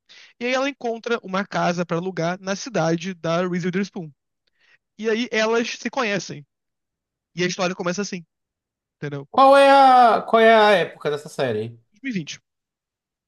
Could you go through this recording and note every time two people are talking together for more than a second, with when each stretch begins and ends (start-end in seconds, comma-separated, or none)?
none